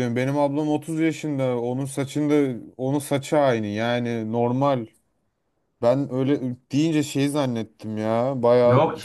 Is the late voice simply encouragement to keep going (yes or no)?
no